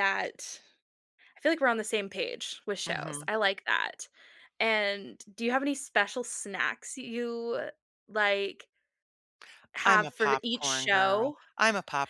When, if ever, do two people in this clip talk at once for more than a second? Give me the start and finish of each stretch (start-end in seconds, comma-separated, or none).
9.8-11.4